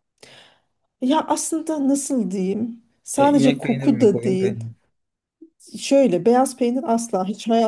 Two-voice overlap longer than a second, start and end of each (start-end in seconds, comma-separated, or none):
3.2-4.6